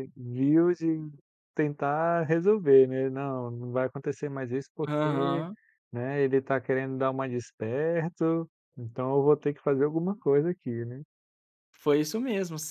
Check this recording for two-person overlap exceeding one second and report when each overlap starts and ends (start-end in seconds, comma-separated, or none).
none